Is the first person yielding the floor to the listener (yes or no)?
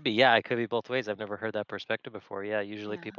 no